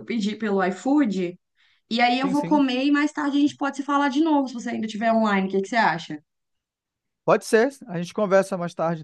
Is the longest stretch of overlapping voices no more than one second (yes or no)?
yes